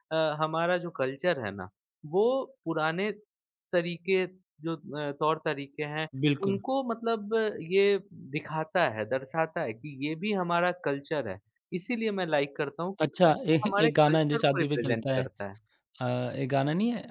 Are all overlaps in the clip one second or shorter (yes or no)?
no